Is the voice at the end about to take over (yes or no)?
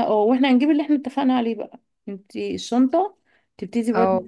no